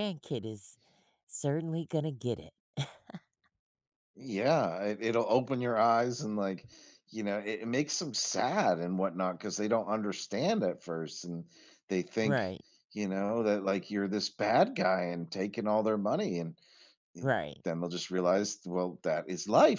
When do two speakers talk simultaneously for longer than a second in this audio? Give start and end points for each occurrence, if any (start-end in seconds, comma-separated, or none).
none